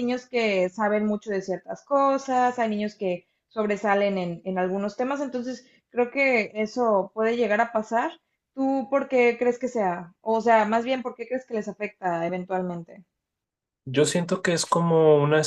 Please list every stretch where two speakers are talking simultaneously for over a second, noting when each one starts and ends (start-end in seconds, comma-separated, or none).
none